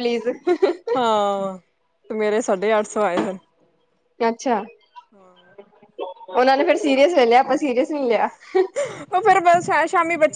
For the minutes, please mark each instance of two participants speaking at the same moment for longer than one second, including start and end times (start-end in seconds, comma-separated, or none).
none